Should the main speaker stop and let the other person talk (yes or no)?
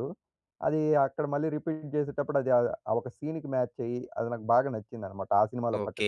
yes